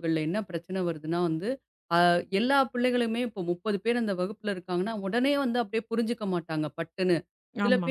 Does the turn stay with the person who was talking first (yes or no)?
yes